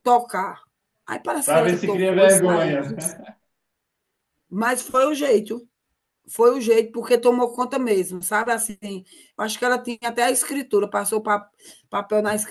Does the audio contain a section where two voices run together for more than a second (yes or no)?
yes